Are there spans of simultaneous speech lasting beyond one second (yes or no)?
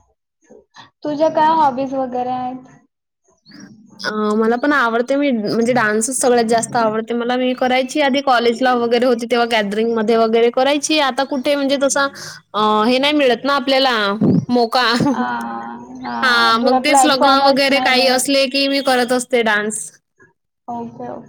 yes